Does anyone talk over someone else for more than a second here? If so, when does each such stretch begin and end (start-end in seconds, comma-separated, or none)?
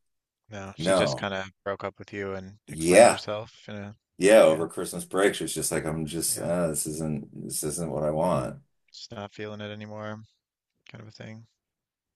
none